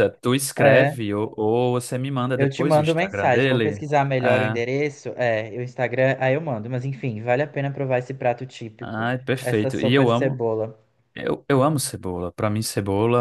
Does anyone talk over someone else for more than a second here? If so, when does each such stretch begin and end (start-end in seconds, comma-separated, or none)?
2.3-4.6, 8.8-10.4